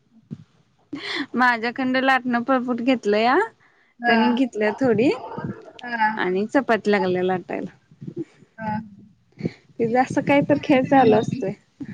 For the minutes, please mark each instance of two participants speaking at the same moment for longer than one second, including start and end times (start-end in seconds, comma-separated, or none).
9.9-11.4